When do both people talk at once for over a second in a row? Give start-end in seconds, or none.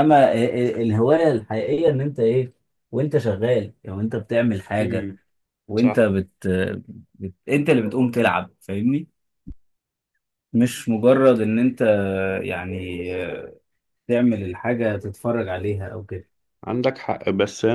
none